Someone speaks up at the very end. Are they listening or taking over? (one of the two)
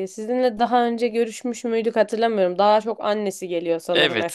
taking over